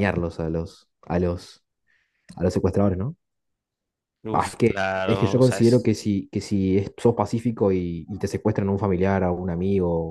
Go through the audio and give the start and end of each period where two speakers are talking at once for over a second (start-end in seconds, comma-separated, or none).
4.3-5.9